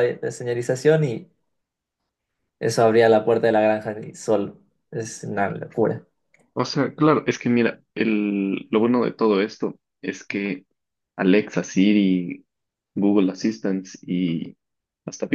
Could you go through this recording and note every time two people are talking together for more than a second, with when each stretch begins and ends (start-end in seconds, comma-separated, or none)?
none